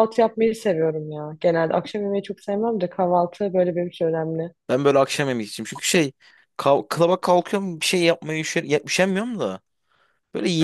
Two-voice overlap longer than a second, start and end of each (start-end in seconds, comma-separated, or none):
none